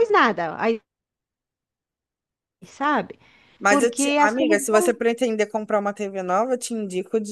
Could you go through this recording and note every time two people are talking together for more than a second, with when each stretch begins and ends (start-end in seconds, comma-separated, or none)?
3.7-4.9